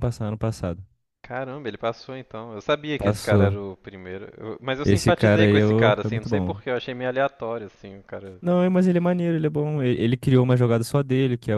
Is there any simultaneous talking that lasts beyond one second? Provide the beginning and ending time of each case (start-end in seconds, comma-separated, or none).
4.8-6.6